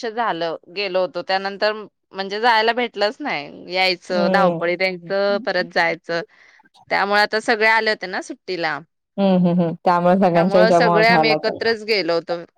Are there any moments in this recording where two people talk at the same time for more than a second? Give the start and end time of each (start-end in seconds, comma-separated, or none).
10.3-11.6